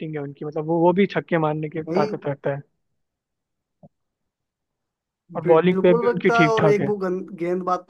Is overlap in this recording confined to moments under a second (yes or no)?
no